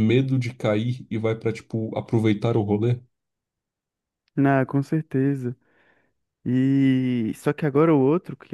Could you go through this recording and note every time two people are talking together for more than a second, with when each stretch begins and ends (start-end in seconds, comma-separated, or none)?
none